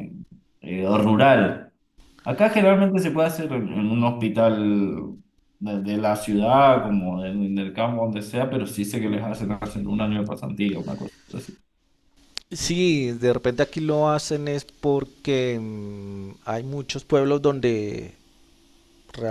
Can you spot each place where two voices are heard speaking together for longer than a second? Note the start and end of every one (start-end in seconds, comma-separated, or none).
none